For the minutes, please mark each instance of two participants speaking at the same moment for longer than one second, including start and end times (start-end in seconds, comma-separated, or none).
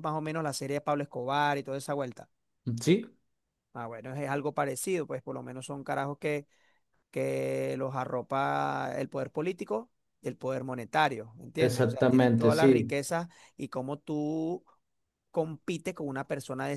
11.6-12.9